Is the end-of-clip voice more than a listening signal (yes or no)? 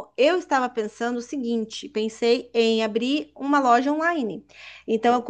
no